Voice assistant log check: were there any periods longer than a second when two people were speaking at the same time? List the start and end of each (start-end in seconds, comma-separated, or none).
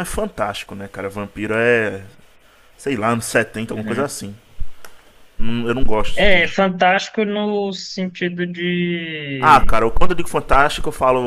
none